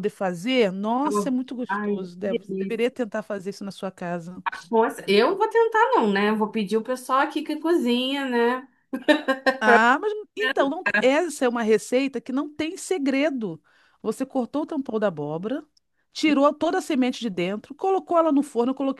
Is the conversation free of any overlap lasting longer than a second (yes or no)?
no